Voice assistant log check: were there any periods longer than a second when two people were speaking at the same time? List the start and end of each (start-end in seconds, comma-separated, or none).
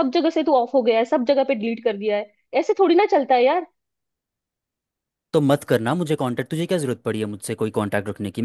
none